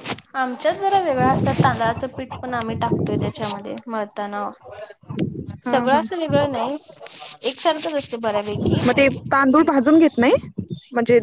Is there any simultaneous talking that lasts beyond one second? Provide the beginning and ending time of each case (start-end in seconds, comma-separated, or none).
none